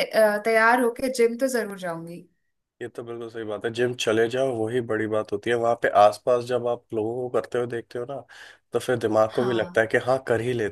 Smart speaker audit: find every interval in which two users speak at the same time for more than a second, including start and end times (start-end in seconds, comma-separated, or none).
none